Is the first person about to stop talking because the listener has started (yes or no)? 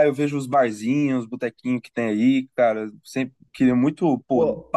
yes